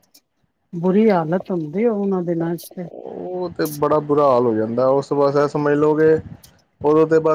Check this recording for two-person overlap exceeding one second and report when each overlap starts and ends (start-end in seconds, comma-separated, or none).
none